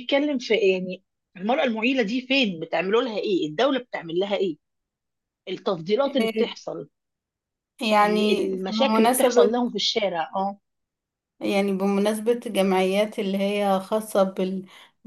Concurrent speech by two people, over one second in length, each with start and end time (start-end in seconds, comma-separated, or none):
8.0-9.6